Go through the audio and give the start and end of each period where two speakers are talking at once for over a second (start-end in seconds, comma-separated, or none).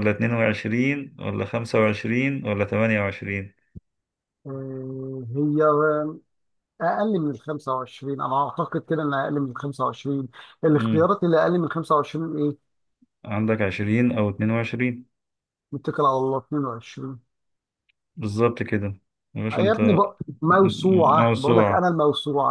20.5-21.9